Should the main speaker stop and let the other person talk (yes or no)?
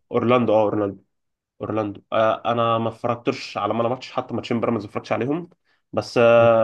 no